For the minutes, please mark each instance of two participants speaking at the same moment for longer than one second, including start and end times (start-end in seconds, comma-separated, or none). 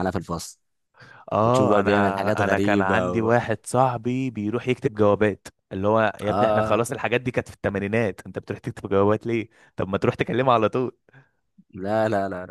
1.4-3.3